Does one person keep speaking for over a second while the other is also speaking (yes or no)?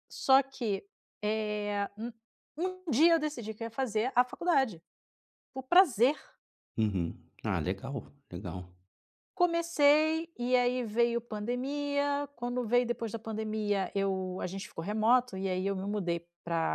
no